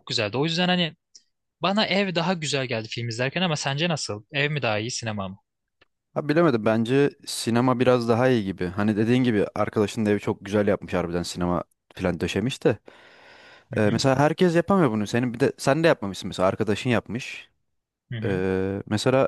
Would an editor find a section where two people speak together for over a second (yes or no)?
no